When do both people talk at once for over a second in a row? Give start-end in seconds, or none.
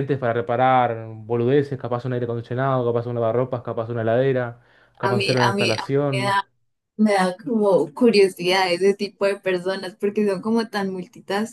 5.0-6.4